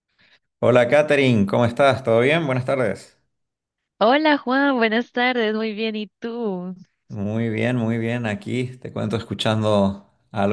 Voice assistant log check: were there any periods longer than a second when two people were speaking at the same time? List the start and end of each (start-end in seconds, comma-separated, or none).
none